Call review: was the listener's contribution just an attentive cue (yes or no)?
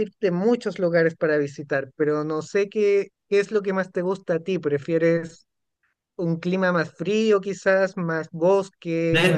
no